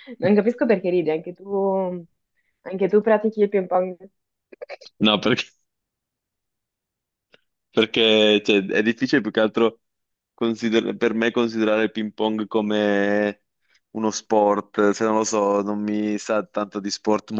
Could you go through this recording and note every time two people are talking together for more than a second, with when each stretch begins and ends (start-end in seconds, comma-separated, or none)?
none